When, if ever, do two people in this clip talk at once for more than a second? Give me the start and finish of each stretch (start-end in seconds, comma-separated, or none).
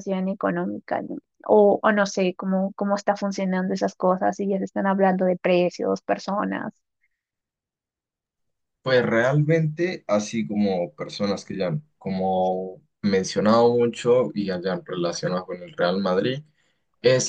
none